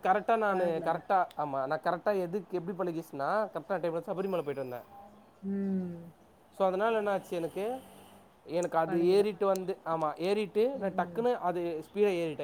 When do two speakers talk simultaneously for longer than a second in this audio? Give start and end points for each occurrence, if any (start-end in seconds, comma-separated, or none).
none